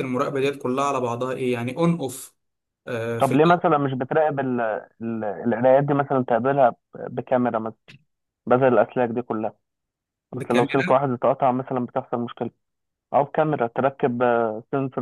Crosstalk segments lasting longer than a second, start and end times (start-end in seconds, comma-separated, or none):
none